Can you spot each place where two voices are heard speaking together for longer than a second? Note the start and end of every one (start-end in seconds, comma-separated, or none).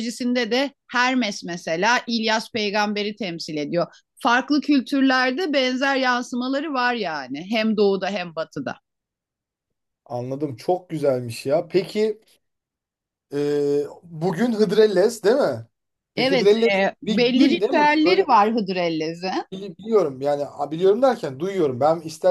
16.2-18.3